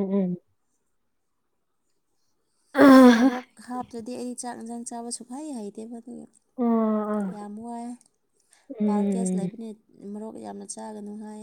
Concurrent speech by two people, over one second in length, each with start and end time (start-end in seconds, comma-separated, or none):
none